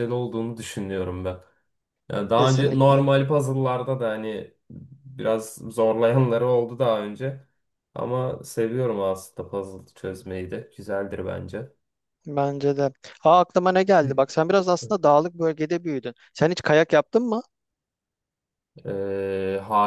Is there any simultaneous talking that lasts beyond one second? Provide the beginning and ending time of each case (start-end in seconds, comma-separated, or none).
none